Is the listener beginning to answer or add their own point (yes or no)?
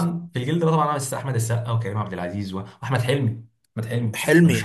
yes